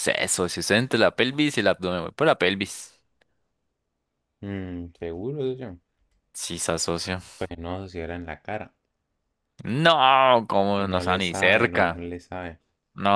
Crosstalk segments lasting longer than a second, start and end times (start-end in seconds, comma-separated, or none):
10.8-12.0